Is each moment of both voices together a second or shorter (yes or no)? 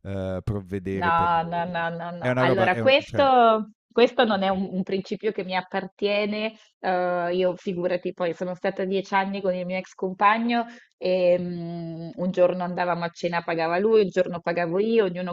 no